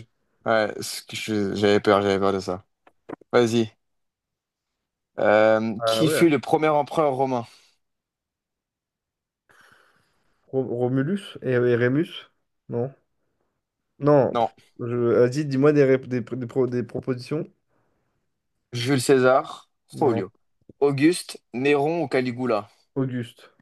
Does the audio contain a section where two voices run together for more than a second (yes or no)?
no